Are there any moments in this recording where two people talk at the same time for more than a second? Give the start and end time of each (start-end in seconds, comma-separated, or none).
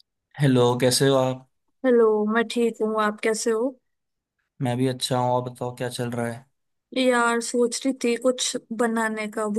none